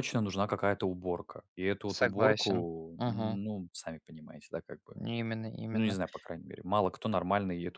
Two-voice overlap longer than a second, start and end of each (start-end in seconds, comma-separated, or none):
2.0-3.4